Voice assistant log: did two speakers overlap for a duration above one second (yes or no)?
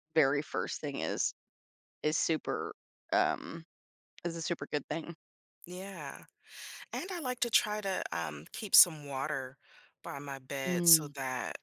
no